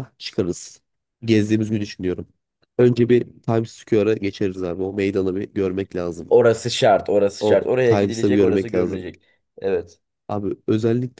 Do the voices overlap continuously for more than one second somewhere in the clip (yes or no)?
yes